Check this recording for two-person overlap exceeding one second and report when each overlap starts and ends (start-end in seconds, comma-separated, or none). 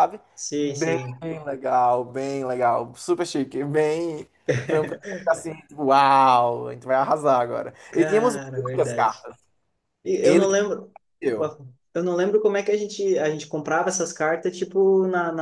7.9-9.3